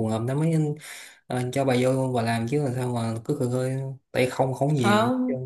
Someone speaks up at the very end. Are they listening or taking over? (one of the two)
taking over